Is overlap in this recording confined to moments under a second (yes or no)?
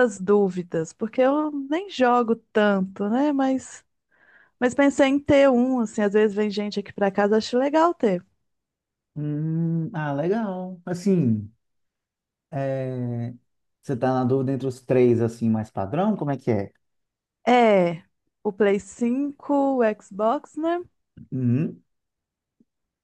yes